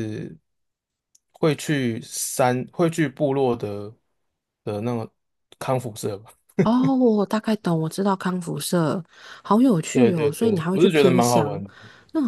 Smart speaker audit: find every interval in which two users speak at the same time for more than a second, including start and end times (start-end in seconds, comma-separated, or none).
9.9-11.6